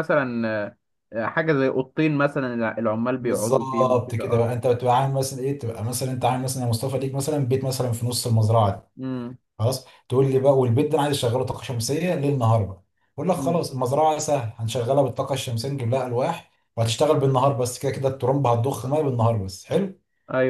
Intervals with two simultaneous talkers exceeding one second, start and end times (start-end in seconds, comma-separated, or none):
3.2-4.5